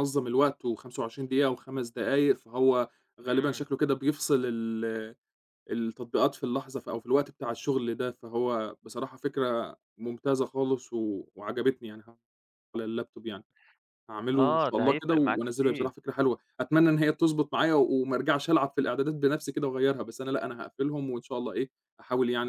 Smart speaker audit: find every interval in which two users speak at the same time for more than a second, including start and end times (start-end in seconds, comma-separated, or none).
14.3-15.9